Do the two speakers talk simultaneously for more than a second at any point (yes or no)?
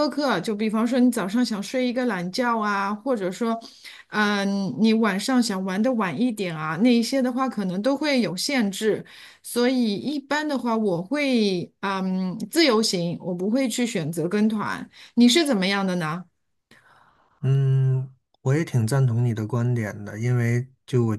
no